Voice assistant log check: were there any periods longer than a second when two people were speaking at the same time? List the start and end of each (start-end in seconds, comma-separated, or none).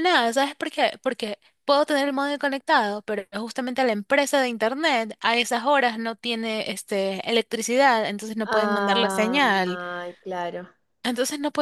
8.4-9.8